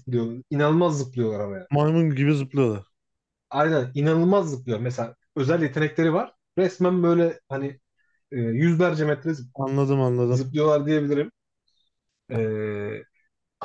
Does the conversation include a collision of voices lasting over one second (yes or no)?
no